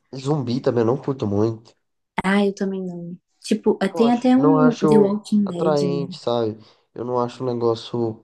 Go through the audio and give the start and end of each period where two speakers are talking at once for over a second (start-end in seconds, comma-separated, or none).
3.9-6.1